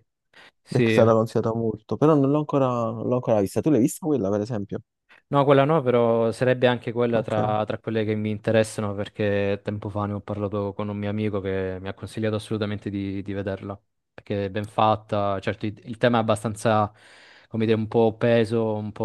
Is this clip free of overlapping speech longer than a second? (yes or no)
yes